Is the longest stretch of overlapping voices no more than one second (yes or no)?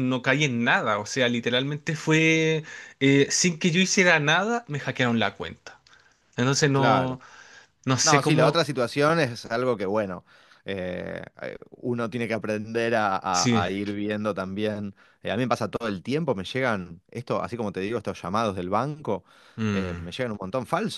yes